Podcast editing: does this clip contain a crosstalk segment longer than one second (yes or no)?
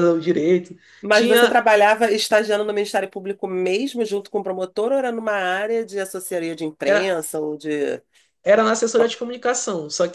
no